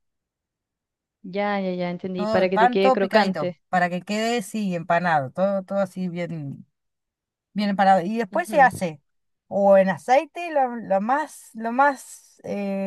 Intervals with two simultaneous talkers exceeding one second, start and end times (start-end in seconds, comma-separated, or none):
2.1-3.6